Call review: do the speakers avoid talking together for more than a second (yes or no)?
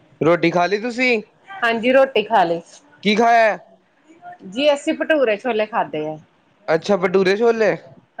yes